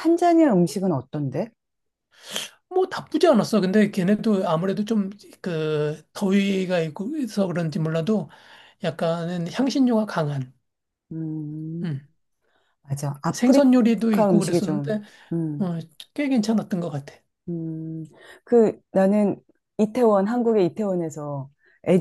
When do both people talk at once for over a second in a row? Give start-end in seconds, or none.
13.3-14.9